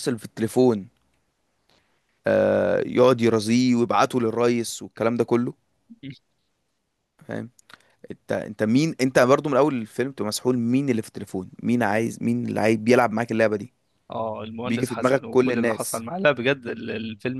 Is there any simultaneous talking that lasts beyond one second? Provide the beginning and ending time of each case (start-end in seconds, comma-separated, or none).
14.7-16.1